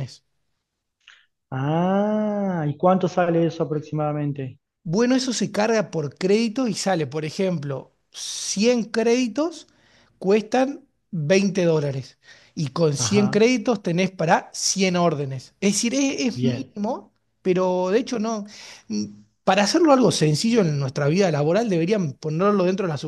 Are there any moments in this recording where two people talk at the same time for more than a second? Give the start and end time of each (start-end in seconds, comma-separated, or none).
none